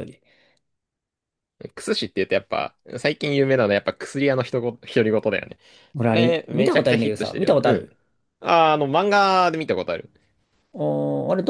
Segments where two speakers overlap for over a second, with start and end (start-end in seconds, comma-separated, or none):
6.0-7.9